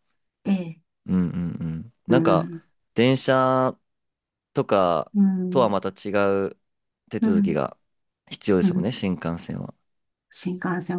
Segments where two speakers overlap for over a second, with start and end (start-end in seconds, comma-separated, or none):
none